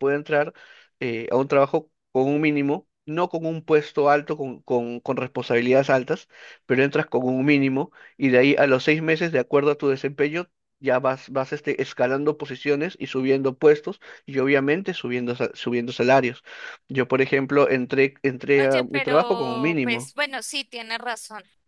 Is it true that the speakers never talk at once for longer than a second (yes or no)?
no